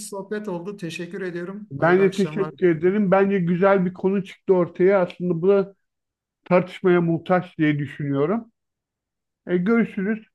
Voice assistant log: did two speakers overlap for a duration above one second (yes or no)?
yes